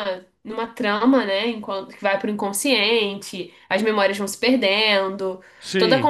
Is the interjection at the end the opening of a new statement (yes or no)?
no